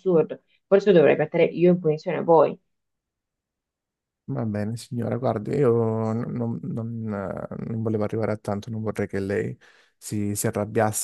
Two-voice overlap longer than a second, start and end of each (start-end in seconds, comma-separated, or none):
none